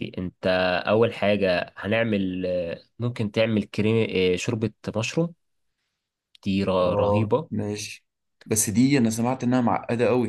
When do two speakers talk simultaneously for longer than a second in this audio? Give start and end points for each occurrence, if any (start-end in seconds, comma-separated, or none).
none